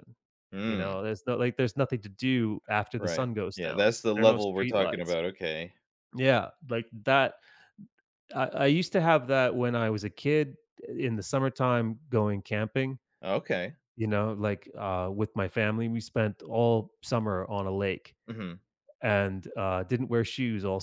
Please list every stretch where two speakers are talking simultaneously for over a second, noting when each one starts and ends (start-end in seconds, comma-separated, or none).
3.0-5.2